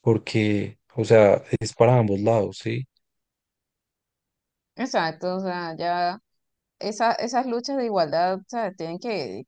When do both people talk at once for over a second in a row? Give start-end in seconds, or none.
none